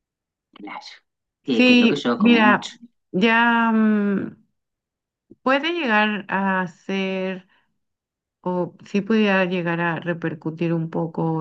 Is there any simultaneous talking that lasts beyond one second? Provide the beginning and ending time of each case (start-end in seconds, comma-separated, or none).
1.5-2.7